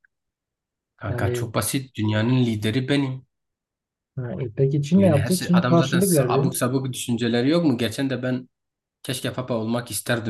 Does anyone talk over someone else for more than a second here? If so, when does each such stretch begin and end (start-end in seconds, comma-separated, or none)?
5.0-6.5